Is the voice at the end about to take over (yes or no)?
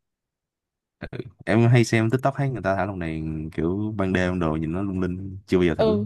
yes